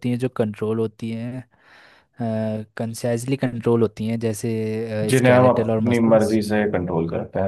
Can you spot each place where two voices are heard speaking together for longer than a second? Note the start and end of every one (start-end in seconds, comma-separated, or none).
5.1-6.4